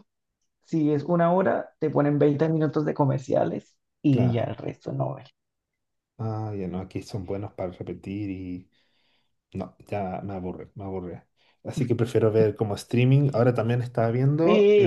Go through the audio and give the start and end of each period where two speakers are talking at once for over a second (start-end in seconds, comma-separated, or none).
none